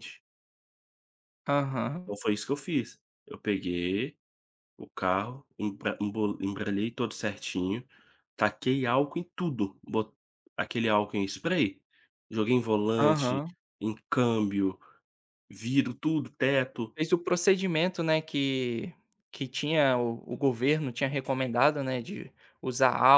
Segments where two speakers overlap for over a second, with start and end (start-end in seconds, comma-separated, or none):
none